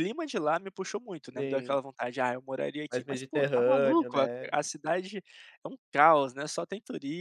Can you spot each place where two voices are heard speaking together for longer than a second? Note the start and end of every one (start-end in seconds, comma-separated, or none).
2.9-4.5